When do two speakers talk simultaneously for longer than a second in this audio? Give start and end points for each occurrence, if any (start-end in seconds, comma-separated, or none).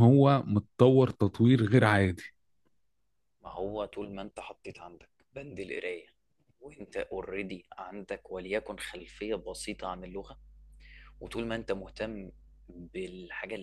none